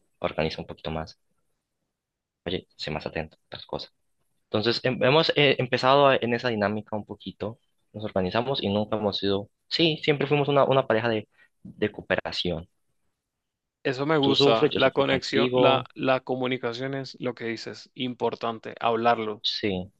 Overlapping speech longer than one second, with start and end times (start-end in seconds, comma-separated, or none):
14.2-15.9